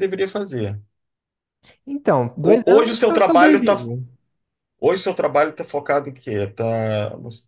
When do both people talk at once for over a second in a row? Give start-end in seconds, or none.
2.4-3.7